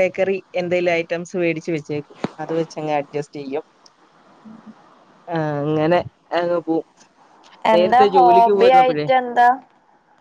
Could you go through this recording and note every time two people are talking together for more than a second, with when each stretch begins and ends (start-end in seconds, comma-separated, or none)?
7.7-9.1